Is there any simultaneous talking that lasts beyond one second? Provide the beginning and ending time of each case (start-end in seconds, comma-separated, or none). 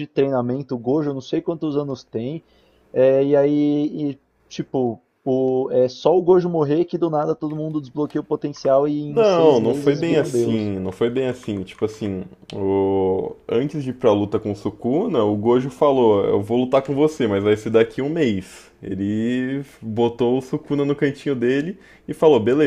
9.1-10.7